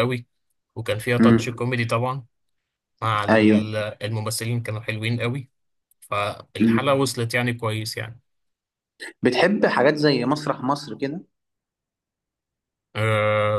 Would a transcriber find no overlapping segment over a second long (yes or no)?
yes